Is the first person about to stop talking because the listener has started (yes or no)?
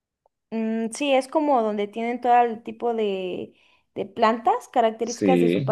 yes